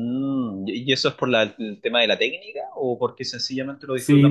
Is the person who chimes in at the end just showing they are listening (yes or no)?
no